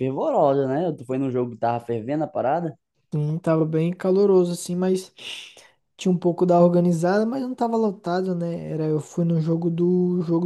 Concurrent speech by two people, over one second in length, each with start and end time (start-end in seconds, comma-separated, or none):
none